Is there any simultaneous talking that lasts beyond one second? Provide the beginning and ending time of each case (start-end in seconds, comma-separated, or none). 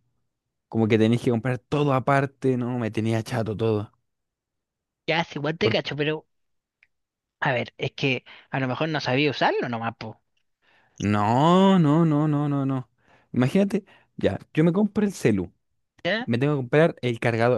none